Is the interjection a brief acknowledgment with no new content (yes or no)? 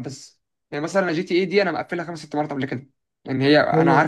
yes